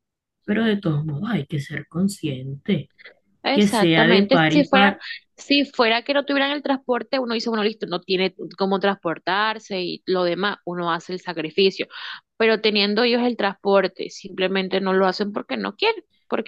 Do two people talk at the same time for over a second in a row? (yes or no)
yes